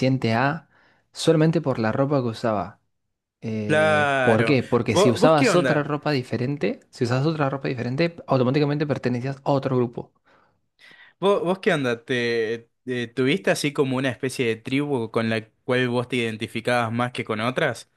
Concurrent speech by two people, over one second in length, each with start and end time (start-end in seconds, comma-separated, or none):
3.6-5.9